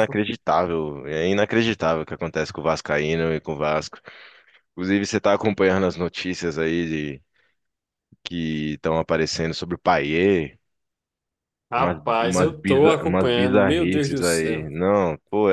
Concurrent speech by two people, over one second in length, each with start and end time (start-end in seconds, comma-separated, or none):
11.8-14.7